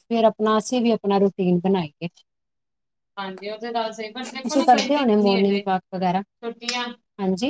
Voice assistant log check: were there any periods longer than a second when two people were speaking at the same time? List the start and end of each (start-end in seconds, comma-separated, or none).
4.7-6.2